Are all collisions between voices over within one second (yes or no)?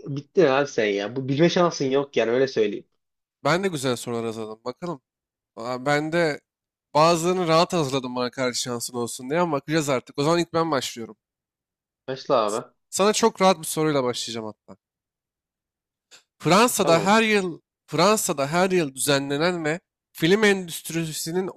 yes